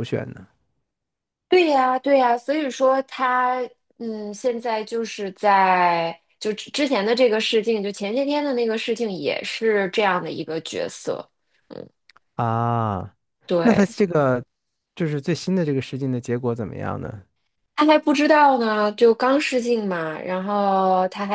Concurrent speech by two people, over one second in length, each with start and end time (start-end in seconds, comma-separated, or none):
none